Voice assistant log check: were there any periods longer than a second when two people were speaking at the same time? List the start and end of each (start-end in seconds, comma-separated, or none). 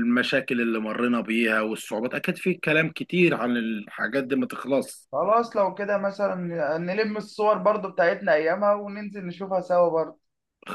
none